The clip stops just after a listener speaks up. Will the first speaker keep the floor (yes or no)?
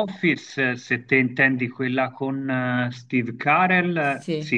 yes